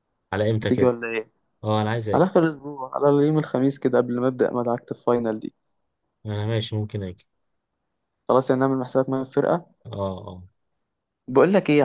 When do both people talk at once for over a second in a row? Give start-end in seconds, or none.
none